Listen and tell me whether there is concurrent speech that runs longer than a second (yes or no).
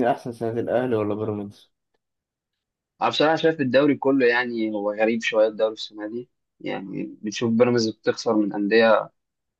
no